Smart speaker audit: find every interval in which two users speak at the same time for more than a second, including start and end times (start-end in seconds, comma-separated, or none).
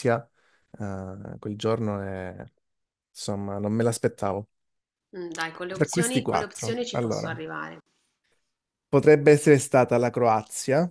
5.7-7.3